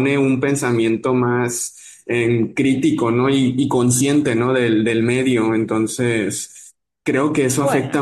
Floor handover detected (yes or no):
no